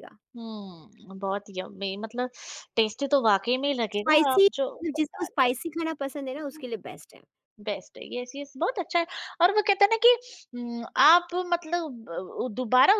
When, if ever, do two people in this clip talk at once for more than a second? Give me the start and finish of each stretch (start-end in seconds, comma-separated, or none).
4.0-6.0